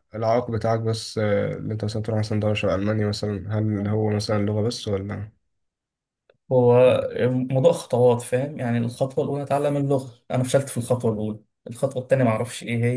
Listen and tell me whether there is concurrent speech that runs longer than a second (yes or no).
no